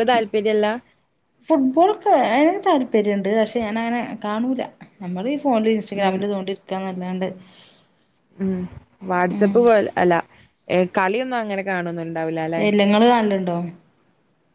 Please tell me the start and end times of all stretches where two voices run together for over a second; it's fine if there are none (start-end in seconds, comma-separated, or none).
none